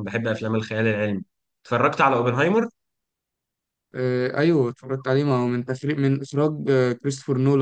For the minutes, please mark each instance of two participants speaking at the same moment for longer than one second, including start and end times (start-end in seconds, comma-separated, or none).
none